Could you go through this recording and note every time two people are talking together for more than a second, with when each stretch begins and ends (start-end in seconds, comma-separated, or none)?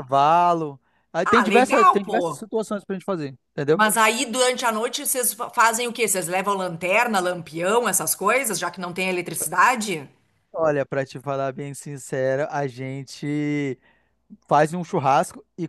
1.2-2.5